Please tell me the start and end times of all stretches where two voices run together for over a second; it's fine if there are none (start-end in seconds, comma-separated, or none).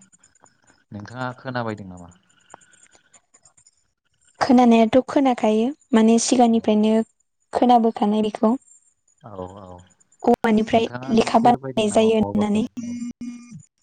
10.7-12.6